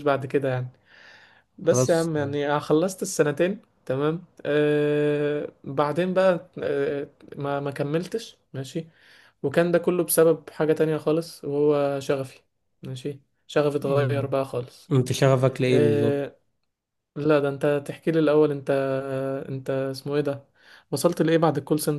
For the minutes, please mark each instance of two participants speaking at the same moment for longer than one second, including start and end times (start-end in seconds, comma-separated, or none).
none